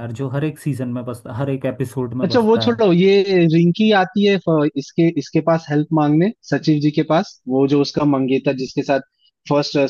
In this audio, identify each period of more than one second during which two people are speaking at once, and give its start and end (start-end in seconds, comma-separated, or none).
none